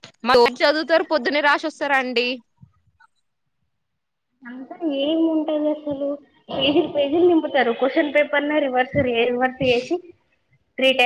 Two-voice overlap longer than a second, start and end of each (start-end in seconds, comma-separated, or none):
none